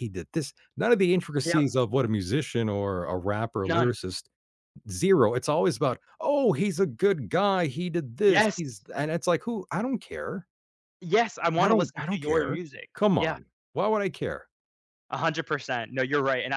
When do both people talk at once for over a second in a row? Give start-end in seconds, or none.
11.6-13.4